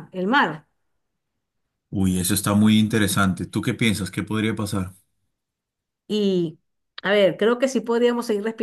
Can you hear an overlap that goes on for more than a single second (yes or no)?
no